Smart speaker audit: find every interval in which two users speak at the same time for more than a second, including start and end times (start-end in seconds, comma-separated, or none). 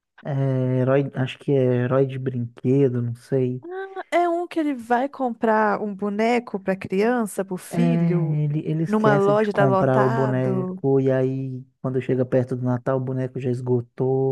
8.9-10.8